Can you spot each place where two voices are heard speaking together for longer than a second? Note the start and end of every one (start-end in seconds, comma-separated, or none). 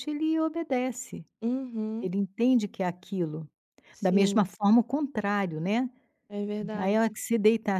none